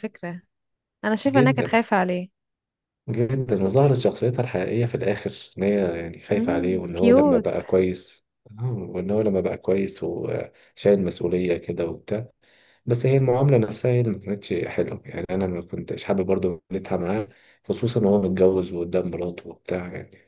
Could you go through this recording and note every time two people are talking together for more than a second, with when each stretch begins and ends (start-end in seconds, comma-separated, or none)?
6.3-7.6